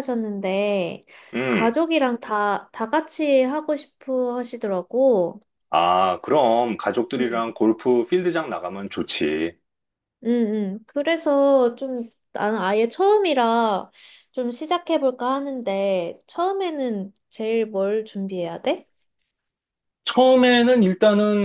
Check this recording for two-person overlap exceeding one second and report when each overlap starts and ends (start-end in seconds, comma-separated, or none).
none